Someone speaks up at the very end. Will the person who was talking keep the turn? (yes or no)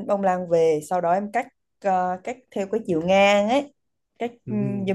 yes